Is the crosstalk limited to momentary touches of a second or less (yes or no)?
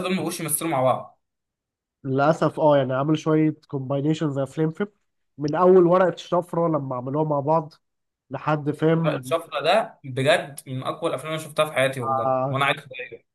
yes